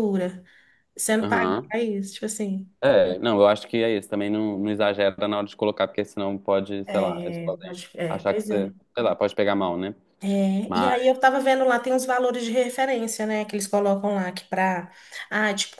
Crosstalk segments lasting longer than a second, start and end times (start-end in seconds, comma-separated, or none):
6.8-8.7